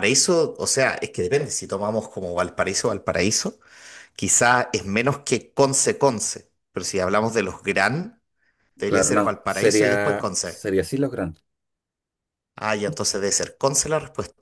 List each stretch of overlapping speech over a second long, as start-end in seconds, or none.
8.9-10.7